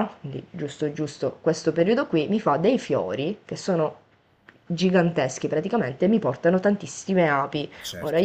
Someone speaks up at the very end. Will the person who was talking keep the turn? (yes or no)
yes